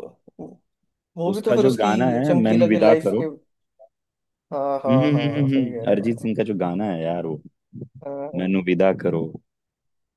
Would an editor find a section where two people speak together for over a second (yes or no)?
yes